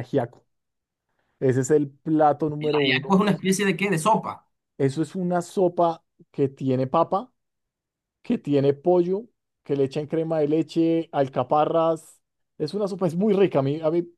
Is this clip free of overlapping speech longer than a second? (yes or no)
yes